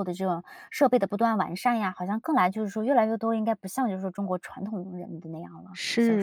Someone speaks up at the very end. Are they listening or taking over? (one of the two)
taking over